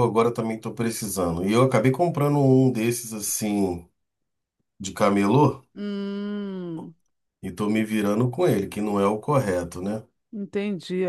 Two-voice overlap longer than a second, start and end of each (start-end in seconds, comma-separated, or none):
none